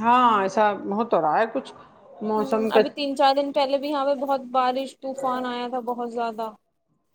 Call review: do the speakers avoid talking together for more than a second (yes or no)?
yes